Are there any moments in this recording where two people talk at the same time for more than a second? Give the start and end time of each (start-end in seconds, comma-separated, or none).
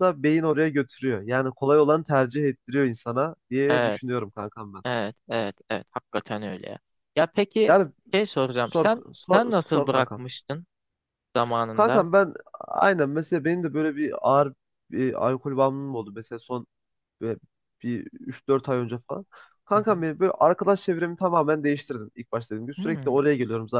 8.6-10.3